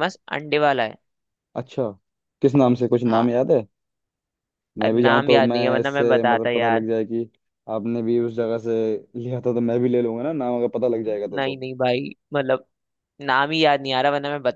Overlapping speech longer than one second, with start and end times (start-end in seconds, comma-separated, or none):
4.8-6.8